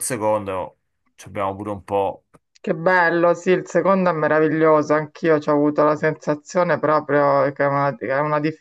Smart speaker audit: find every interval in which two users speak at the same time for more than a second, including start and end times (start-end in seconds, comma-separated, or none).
none